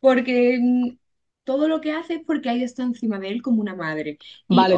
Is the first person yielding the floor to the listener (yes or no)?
yes